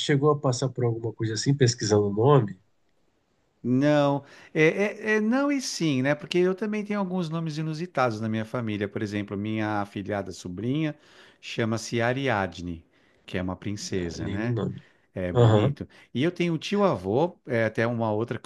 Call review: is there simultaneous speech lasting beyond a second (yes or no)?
no